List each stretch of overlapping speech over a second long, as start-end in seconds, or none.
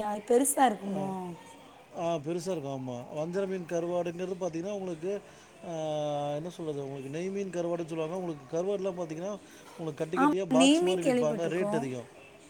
10.2-11.8